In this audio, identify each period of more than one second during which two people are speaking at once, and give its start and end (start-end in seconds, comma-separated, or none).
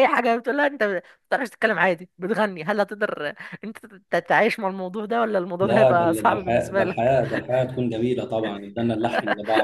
5.6-7.2